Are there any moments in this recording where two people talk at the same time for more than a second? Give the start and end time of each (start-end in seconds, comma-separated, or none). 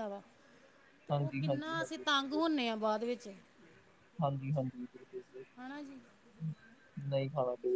1.1-2.4